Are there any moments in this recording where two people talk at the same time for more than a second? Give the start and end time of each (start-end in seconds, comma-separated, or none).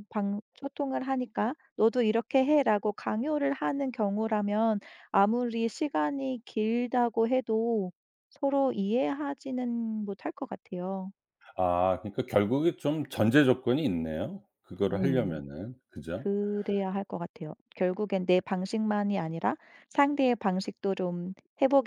none